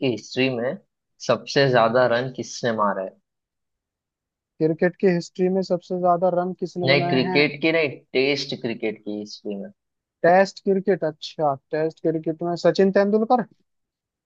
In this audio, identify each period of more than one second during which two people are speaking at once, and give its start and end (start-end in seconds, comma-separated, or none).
none